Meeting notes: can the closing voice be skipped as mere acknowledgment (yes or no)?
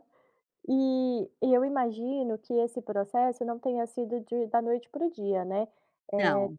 yes